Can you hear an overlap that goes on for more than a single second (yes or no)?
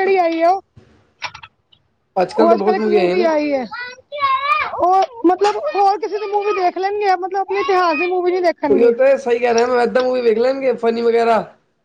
no